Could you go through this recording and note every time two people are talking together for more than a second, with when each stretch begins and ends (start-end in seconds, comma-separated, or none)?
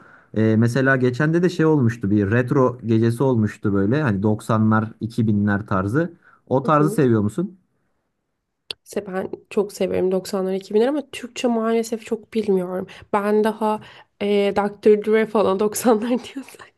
none